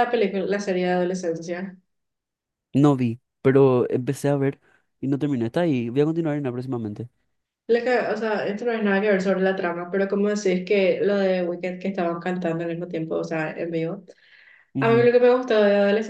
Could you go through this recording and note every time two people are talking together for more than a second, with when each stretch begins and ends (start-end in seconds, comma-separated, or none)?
none